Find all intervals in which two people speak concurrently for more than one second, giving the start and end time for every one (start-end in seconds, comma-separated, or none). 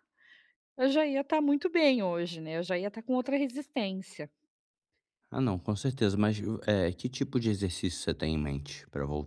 none